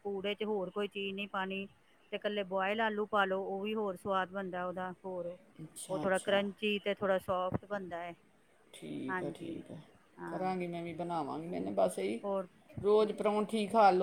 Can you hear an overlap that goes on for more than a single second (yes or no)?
no